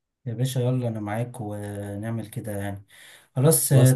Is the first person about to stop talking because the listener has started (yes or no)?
no